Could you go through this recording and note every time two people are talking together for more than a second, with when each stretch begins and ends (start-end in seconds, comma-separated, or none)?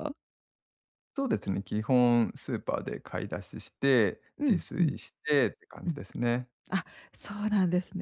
none